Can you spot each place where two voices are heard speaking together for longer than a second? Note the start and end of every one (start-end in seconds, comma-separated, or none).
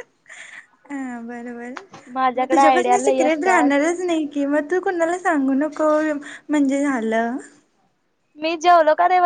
2.4-3.7